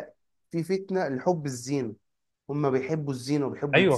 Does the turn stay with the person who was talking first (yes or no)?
yes